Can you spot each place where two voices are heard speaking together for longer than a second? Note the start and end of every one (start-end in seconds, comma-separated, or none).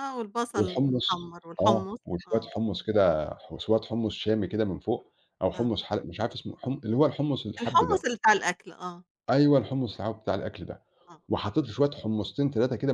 0.5-2.5